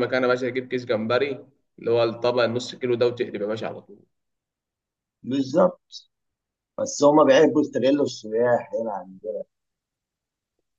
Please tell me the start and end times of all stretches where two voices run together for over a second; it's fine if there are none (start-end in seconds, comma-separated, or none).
none